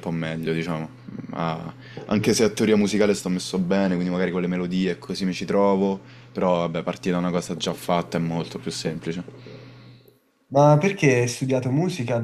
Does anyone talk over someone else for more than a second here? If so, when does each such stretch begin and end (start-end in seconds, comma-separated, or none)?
none